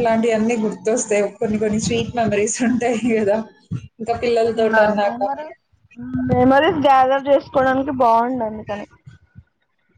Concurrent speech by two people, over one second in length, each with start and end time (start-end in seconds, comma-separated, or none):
none